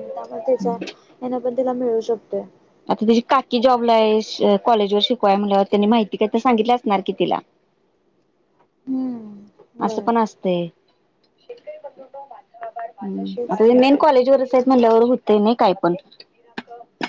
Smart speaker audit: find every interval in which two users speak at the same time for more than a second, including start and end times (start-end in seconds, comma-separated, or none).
none